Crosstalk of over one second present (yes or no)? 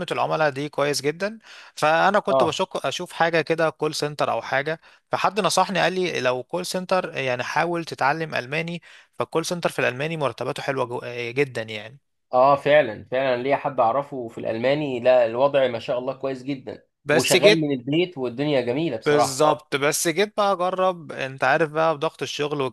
no